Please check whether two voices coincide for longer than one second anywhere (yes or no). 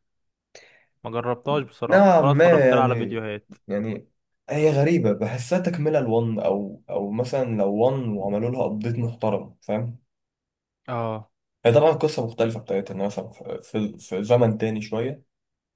yes